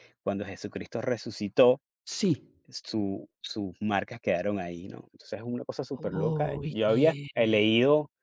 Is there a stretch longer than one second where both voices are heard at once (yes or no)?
yes